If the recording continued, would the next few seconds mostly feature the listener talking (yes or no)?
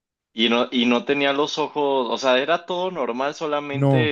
yes